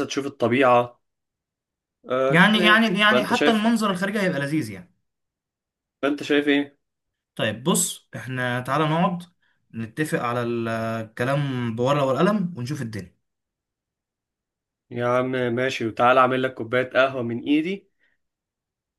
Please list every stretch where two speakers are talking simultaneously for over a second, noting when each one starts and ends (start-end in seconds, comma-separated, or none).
2.3-3.7